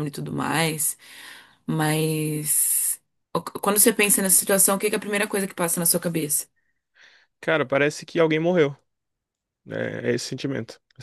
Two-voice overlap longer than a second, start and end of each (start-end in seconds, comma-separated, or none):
none